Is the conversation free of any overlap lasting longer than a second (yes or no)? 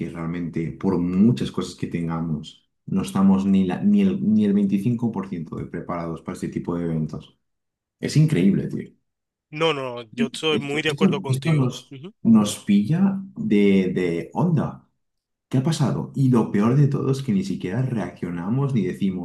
no